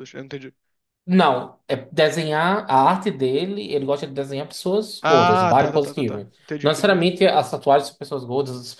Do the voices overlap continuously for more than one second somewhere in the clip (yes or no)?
yes